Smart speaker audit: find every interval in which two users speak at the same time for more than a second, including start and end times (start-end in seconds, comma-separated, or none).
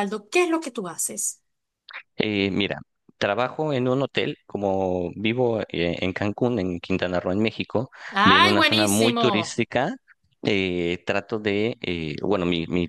8.2-9.7